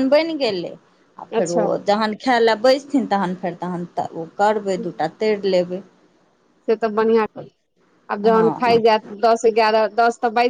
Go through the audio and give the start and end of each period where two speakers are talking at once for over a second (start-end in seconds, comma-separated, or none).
none